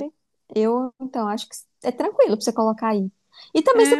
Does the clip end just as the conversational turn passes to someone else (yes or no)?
yes